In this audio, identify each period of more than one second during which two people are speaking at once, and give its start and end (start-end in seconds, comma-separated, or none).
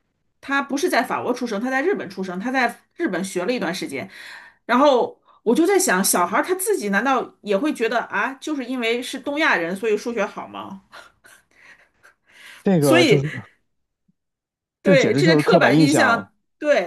14.8-16.3